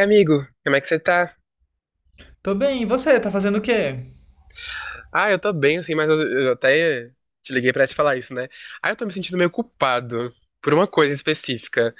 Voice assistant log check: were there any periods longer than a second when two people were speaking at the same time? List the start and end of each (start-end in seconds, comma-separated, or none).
none